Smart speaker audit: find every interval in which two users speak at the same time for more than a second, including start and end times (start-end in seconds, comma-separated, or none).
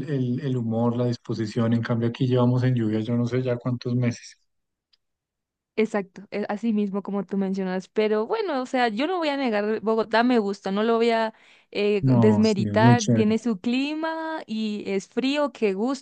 12.0-13.5